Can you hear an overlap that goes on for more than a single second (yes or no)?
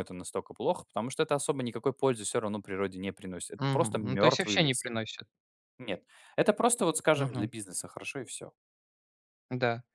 yes